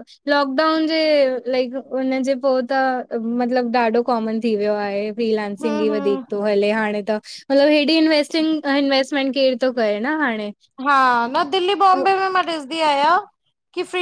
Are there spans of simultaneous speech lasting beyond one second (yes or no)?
no